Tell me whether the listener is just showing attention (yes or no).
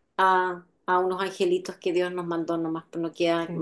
yes